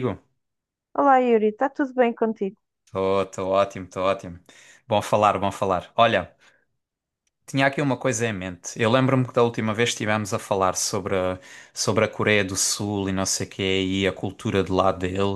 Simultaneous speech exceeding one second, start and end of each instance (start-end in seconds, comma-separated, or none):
none